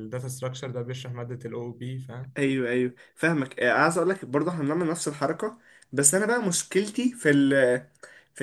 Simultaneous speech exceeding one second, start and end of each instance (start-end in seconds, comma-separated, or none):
none